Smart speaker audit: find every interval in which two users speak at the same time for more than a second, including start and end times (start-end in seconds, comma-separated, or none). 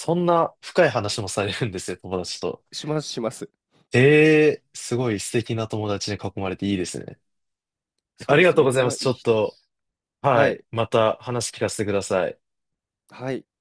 8.3-9.6